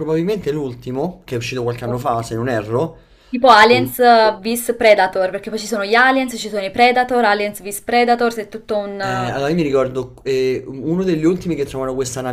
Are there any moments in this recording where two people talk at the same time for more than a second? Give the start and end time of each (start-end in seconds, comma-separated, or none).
none